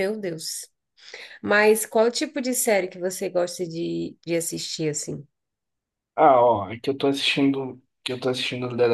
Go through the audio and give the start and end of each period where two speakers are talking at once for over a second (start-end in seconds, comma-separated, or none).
none